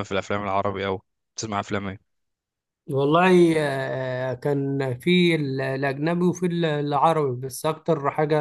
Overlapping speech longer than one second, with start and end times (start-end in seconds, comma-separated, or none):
none